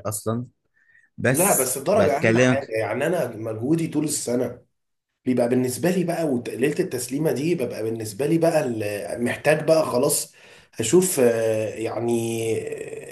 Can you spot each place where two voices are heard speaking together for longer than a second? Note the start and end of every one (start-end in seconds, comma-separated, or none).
1.3-2.8